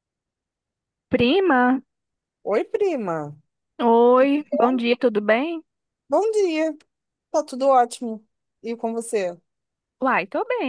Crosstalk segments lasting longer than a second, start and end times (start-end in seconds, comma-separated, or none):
none